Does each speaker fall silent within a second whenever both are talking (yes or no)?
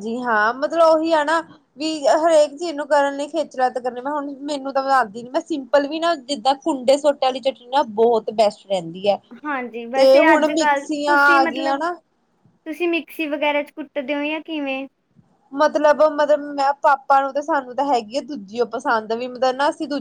no